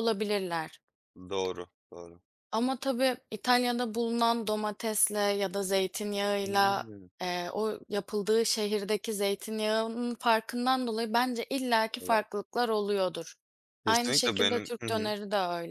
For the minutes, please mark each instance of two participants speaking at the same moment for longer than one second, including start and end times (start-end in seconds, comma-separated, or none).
13.8-15.1